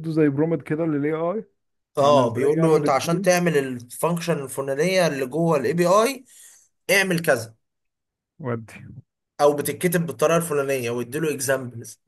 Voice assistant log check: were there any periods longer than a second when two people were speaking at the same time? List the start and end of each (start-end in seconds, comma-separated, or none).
2.0-3.3